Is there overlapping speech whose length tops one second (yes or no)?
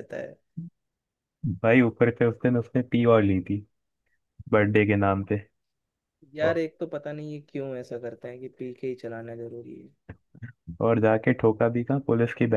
no